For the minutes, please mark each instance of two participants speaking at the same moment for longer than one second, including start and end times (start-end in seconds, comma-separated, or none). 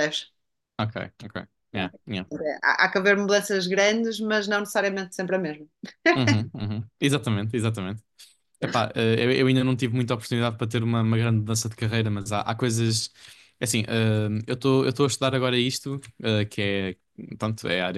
none